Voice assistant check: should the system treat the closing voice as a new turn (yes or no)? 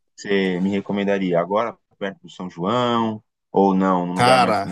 no